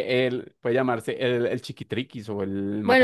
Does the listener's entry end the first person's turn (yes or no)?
yes